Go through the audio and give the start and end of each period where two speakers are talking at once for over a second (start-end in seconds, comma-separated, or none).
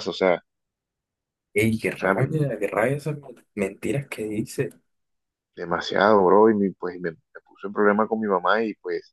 none